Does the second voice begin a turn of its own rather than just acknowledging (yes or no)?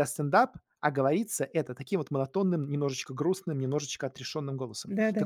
no